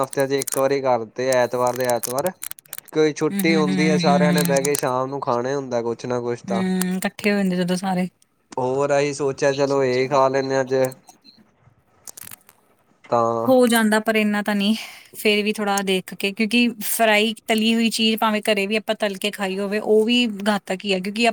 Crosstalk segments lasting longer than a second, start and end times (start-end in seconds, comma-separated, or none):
3.3-4.7